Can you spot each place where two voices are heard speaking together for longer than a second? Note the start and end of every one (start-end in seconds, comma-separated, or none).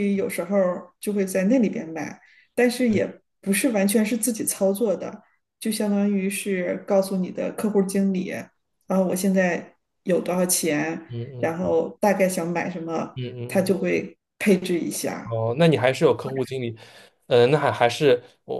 none